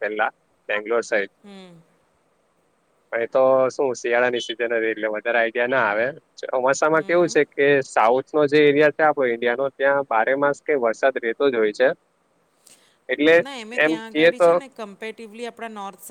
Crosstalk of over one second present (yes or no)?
no